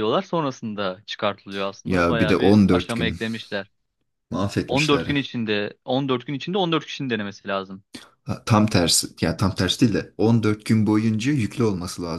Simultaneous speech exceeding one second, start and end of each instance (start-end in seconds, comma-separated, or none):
1.9-3.2